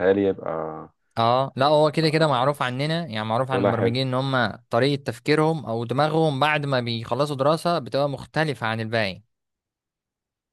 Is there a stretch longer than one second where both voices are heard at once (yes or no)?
no